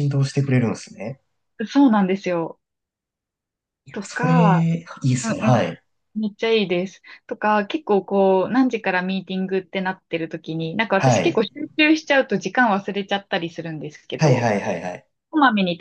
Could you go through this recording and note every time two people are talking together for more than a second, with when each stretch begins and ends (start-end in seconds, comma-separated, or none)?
none